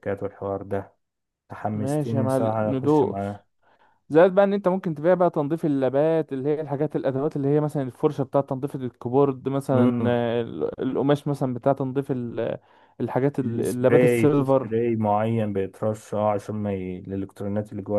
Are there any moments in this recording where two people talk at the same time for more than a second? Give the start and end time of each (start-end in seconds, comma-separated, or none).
1.7-3.4, 13.4-14.7